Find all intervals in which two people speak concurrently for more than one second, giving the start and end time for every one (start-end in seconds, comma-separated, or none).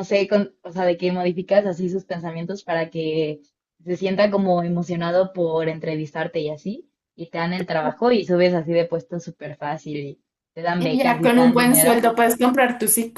10.8-12.1